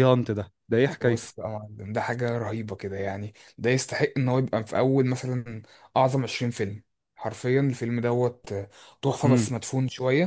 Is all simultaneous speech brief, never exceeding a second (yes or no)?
yes